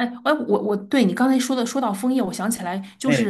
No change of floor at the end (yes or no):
yes